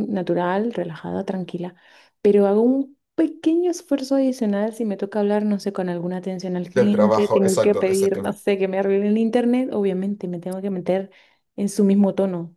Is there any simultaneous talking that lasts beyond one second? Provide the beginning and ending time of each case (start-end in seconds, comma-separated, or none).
6.8-8.3